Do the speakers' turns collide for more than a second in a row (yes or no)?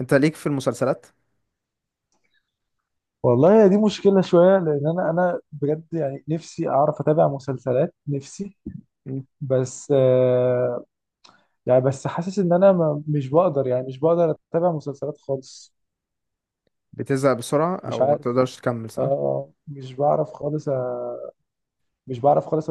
no